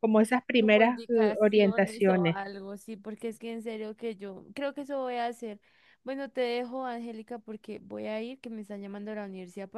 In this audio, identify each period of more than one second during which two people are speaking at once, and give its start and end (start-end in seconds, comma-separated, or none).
0.6-2.4